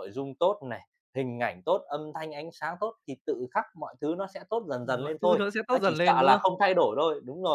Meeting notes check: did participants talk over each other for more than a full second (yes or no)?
yes